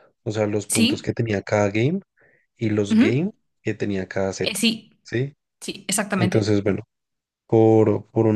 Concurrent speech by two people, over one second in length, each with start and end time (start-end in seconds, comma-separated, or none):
none